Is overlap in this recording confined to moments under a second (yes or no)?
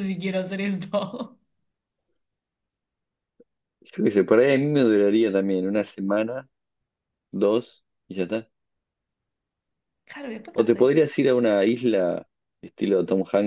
yes